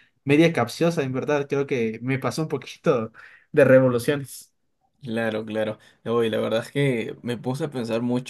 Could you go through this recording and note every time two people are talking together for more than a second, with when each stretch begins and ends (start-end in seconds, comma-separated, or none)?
none